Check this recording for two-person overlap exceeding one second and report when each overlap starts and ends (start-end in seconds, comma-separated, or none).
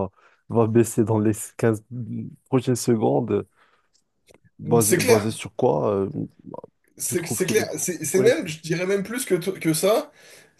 7.0-8.4